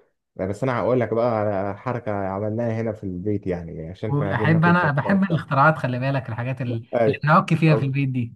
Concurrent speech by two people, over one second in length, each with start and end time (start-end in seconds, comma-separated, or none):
4.1-5.4